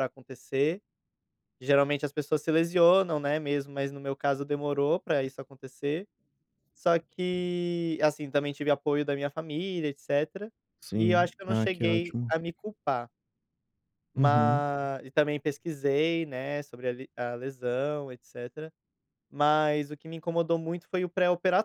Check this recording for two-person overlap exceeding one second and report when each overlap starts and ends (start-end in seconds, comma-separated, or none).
10.9-12.3